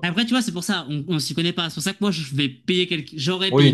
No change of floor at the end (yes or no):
no